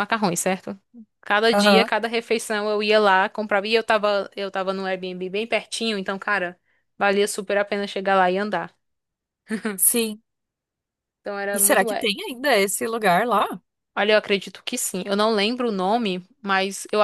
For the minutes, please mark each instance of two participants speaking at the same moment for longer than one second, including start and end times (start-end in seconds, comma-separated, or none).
none